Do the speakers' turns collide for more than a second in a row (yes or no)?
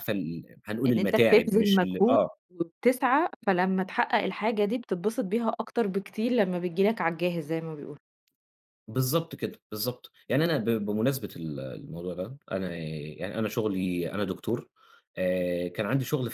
yes